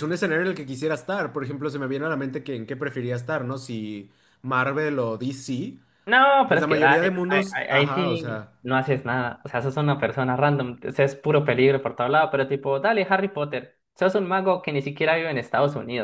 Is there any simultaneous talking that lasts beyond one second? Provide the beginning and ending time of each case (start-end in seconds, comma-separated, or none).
6.5-8.5